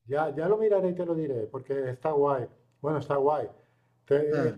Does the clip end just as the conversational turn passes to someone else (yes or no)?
no